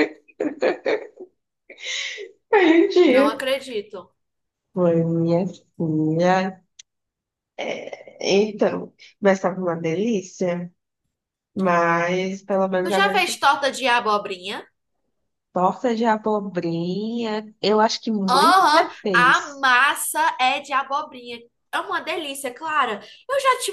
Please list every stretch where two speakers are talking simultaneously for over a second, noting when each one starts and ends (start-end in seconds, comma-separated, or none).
18.3-19.6